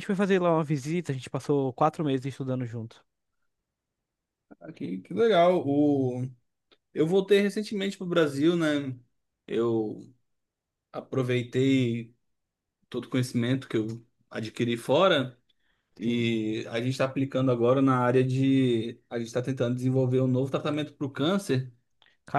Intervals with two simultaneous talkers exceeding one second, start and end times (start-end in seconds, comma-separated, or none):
none